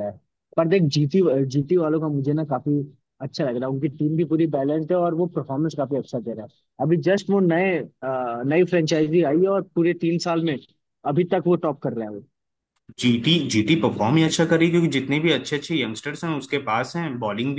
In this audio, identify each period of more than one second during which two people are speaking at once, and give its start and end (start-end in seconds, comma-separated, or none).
none